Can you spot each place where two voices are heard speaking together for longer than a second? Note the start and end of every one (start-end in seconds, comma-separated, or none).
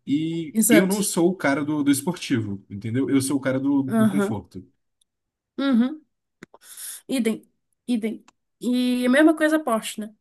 none